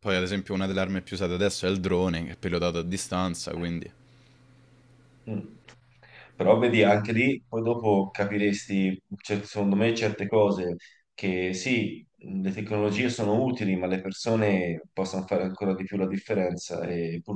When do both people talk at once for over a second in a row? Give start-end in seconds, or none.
none